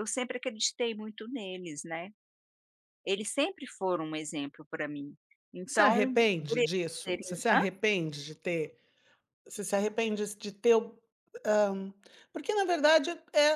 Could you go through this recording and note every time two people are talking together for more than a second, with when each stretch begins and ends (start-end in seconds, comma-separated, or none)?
5.7-7.6